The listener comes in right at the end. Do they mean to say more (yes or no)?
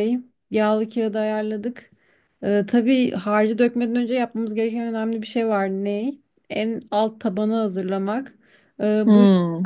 no